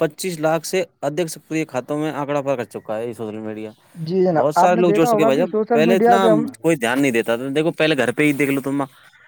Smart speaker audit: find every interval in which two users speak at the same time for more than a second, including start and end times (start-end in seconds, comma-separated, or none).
4.3-6.5